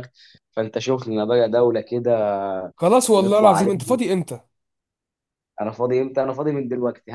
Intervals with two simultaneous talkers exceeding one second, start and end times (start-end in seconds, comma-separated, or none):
none